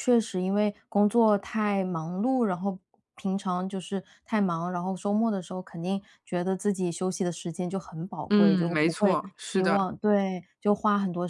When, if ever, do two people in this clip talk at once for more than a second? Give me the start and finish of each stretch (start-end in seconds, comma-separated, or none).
8.3-9.9